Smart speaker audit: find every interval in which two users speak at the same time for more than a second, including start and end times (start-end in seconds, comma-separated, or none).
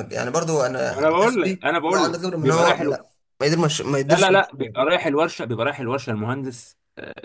1.0-3.1